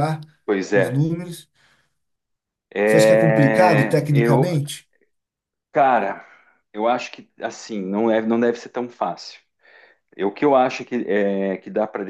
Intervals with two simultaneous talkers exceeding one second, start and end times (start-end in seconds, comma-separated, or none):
2.9-4.5